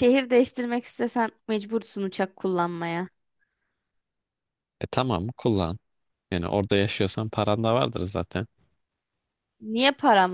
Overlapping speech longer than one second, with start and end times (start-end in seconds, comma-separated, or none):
none